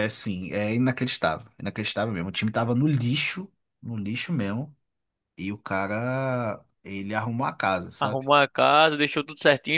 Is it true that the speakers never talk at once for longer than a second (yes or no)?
yes